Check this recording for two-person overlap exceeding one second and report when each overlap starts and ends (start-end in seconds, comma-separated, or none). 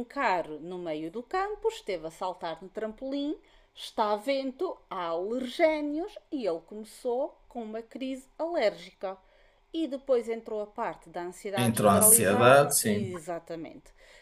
11.6-13.1